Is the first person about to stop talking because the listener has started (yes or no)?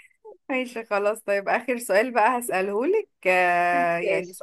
no